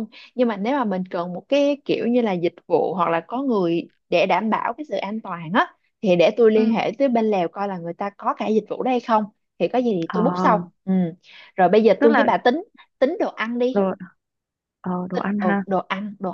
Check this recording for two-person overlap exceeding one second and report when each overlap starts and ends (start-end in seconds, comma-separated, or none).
none